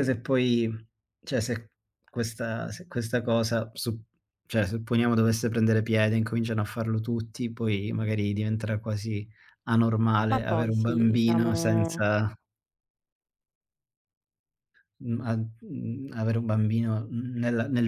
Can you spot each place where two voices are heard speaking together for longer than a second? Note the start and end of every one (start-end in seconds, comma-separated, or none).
10.3-12.0